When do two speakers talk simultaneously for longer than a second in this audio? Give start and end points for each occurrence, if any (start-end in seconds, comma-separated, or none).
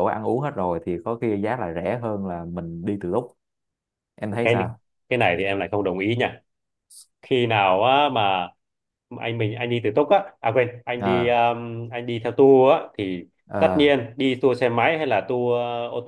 none